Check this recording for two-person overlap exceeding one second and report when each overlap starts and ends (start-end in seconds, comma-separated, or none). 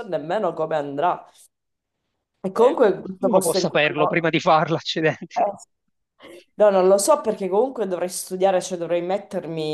2.5-4.3